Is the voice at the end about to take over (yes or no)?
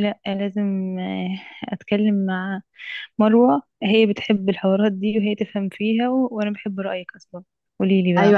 yes